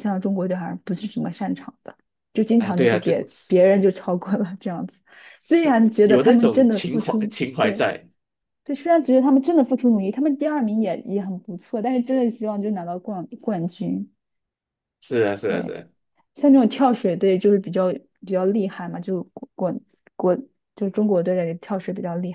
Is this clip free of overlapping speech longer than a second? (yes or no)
no